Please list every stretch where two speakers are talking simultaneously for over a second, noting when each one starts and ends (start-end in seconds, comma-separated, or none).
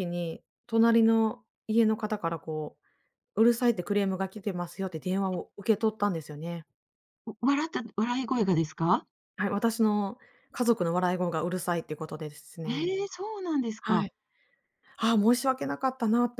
none